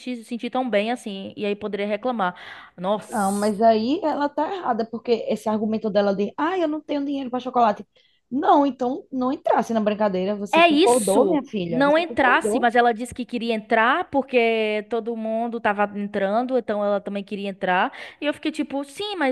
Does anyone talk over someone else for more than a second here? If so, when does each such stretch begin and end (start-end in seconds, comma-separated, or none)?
10.5-12.7